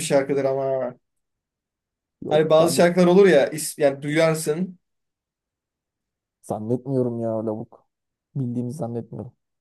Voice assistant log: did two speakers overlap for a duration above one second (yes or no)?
no